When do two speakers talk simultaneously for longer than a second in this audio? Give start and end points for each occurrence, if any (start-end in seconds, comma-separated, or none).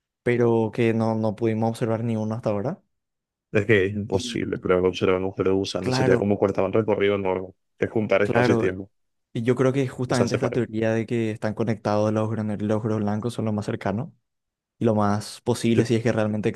none